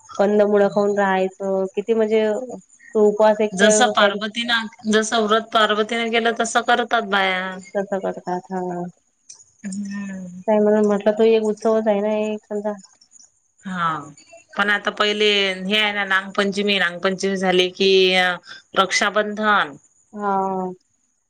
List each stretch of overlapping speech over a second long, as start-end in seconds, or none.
none